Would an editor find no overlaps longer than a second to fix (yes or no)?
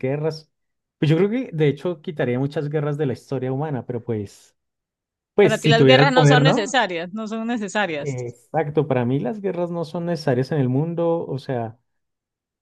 no